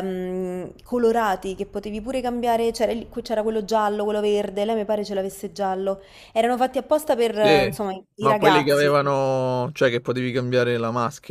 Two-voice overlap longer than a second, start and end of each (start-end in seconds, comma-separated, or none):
7.3-9.0